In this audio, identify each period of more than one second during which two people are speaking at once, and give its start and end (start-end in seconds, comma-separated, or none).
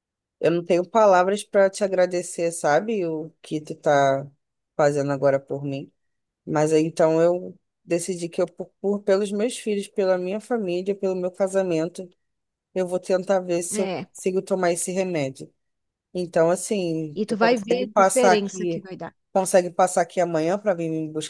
17.1-18.9